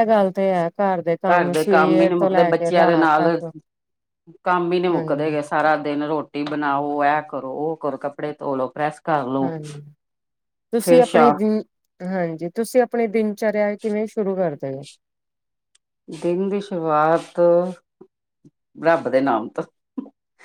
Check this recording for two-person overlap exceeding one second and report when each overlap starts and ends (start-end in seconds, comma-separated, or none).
1.5-3.3